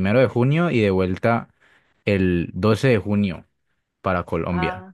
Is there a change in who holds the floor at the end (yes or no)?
no